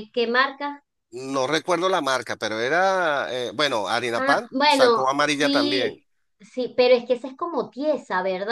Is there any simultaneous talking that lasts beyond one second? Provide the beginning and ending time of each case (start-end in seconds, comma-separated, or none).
4.2-6.0